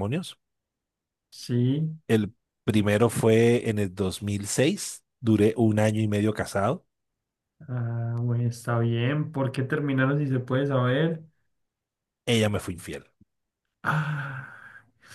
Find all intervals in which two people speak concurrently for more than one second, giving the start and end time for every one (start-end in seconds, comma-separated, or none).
none